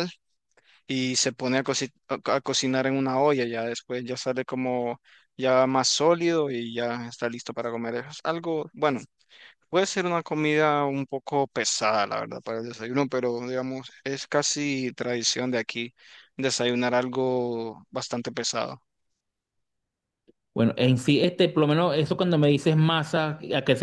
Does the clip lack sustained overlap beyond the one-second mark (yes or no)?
yes